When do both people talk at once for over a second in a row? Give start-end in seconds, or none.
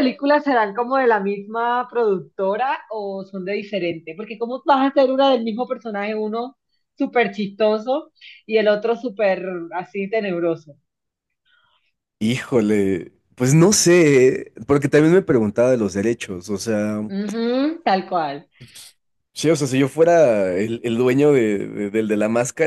none